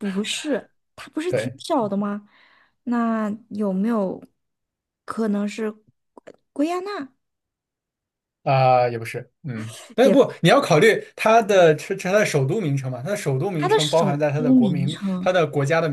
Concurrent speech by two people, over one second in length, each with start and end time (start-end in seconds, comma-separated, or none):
13.6-15.3